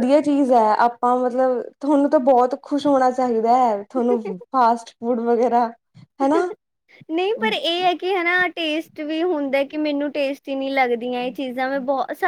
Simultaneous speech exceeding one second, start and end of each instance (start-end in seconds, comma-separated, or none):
none